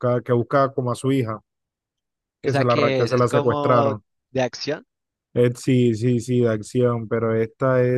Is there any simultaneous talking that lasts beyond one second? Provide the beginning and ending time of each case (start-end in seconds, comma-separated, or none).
2.4-3.9